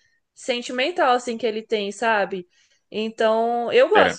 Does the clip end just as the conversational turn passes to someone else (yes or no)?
no